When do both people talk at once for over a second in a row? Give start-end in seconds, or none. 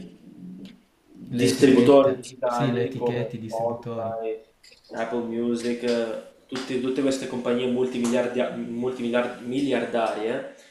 1.3-4.2